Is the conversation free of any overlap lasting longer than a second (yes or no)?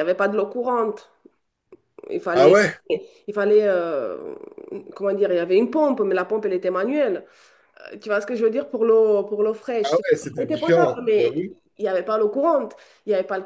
no